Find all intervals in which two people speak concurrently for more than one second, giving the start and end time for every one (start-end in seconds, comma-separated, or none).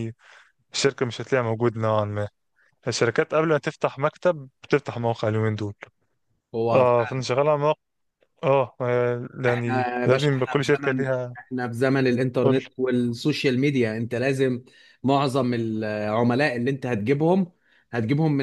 9.5-11.4